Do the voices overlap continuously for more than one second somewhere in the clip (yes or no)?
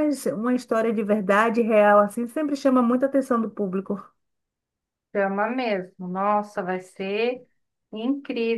no